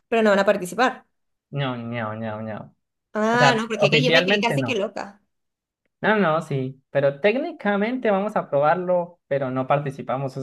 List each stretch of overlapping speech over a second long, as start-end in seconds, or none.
3.3-4.8